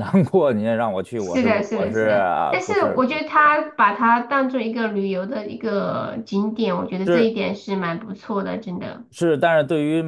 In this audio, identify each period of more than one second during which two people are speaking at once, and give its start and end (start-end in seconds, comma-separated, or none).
1.2-3.7